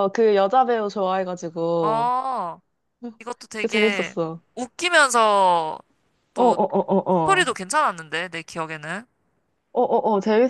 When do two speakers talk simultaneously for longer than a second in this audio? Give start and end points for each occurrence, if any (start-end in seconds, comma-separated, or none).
none